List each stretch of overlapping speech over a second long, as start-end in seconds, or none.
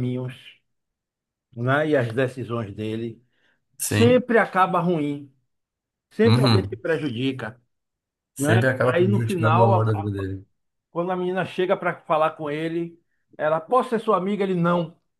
8.4-10.2